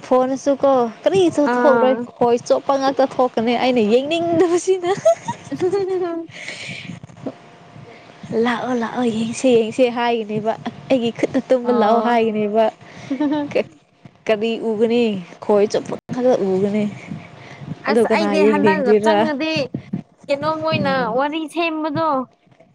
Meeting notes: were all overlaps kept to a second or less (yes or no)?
no